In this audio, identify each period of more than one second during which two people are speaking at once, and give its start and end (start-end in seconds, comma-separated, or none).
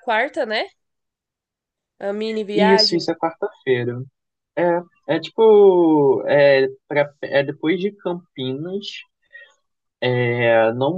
none